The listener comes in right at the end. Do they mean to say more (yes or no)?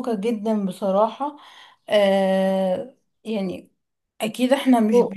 no